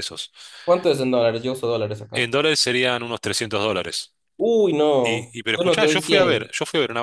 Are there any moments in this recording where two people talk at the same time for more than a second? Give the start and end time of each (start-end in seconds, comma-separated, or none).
5.0-6.5